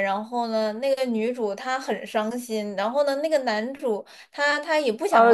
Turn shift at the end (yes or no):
yes